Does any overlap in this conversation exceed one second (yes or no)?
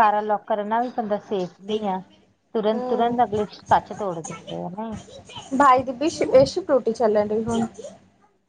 no